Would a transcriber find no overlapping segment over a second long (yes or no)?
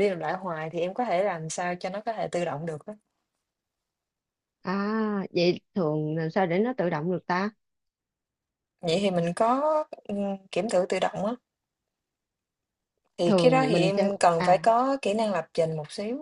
no